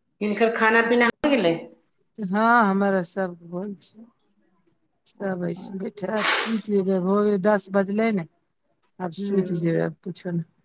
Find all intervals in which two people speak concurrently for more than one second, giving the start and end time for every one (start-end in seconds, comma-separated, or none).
none